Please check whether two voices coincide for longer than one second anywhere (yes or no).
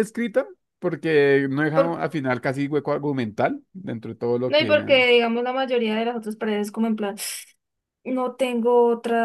no